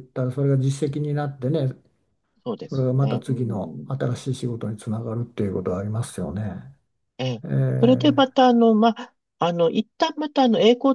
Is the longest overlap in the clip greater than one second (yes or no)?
yes